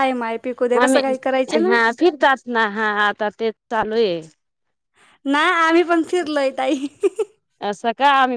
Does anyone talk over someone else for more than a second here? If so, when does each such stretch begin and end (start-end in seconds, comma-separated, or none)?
none